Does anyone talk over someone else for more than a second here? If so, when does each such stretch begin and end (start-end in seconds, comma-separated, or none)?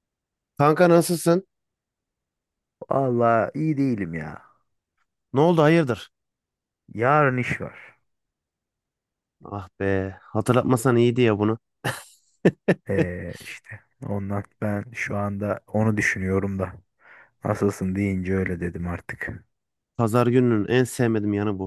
none